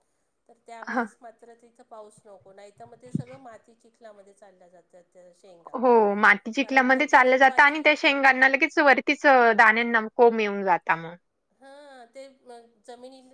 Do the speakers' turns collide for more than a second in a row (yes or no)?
yes